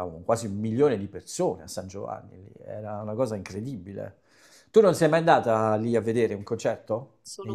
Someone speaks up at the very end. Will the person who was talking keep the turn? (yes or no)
no